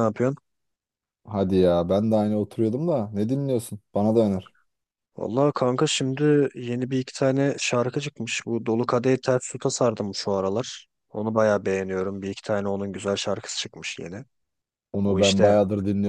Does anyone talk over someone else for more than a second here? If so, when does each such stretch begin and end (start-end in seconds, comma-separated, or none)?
none